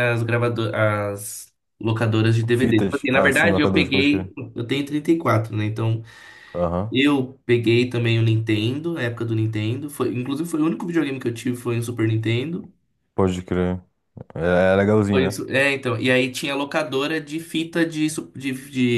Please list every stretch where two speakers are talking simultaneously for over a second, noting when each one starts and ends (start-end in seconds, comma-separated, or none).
2.5-4.3